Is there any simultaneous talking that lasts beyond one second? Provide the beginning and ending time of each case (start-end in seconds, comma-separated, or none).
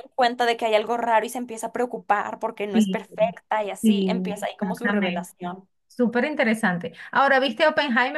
3.8-5.7